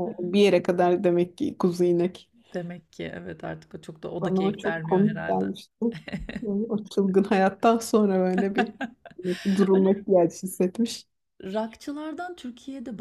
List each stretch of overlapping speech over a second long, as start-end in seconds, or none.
4.2-5.5